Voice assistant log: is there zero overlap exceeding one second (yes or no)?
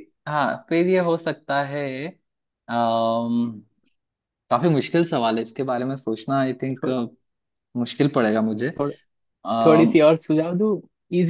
yes